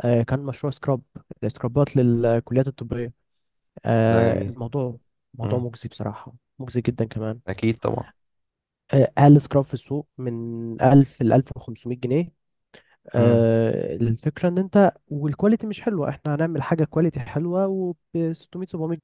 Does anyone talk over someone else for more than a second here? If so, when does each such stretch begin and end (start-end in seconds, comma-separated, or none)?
none